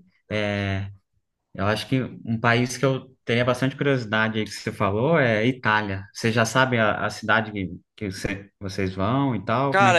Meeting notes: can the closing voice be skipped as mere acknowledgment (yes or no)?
no